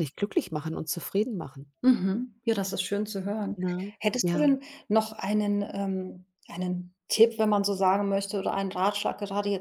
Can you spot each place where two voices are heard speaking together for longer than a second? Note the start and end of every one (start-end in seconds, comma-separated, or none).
none